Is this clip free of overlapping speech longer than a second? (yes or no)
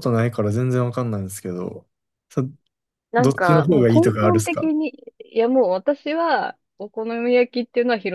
no